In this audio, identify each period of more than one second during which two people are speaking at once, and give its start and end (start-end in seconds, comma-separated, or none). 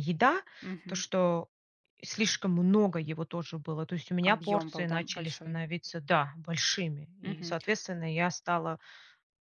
4.2-5.6